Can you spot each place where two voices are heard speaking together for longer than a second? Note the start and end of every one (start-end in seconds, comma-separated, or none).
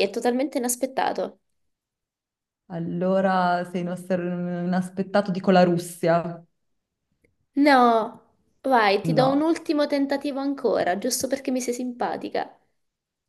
none